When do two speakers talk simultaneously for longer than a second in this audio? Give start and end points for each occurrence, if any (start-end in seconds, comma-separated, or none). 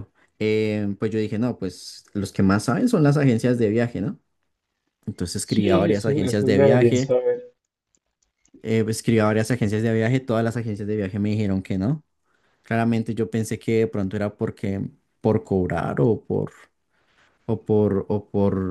5.4-7.1